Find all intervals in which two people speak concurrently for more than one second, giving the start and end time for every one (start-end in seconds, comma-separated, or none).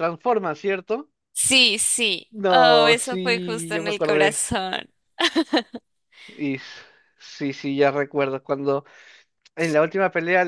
2.3-4.4